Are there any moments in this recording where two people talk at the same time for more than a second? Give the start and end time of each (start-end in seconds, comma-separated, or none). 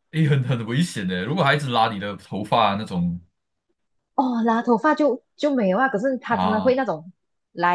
none